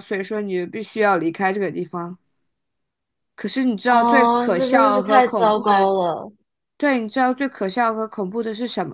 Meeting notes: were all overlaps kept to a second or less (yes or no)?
no